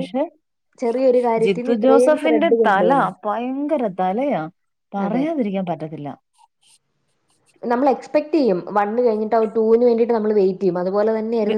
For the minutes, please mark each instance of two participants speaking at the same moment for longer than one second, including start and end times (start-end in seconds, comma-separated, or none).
1.4-2.9